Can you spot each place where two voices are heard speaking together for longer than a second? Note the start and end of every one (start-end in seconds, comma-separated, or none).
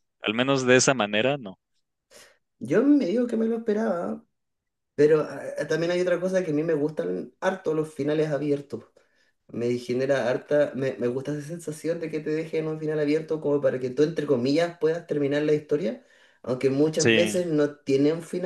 none